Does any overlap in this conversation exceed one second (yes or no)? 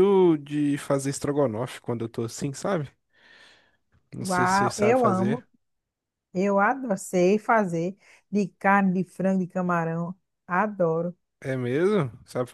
yes